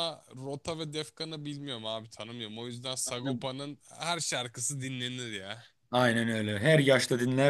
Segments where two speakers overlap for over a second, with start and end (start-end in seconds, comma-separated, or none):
none